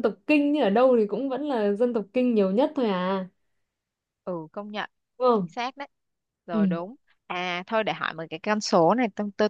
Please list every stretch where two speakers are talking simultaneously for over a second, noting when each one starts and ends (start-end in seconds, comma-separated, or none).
none